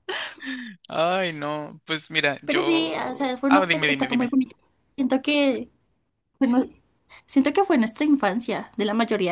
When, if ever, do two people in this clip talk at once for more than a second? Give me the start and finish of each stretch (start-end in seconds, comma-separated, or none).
2.4-4.4